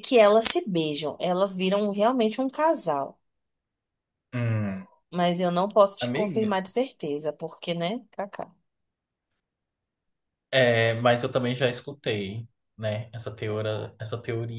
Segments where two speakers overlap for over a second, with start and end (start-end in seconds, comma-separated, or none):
none